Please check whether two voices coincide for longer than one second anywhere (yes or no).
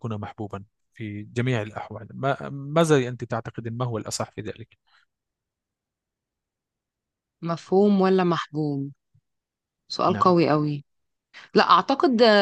no